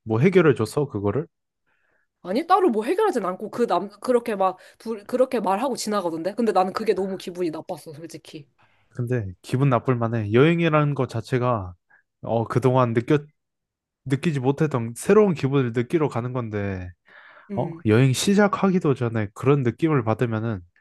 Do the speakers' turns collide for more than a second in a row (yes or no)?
no